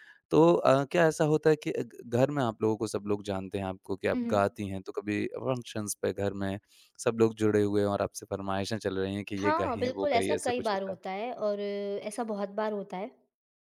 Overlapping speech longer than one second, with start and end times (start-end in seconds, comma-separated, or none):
9.4-11.0